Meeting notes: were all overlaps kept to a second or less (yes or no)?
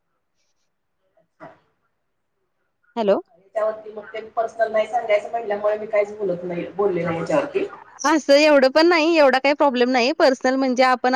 yes